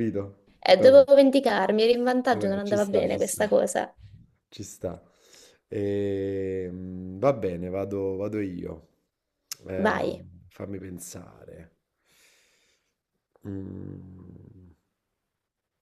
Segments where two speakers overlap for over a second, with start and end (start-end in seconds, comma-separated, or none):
2.3-3.5